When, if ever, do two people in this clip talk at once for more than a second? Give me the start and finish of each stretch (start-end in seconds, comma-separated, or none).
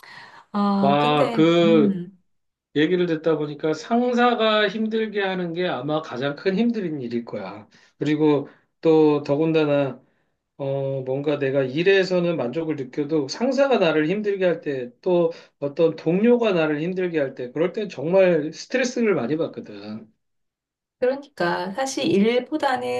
0.8-2.0